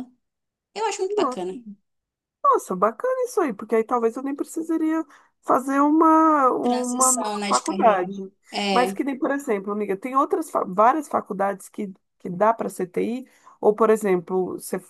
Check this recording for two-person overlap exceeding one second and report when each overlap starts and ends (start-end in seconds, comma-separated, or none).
6.6-8.0